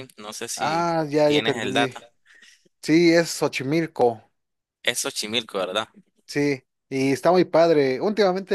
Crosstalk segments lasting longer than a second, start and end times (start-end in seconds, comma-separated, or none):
0.6-1.9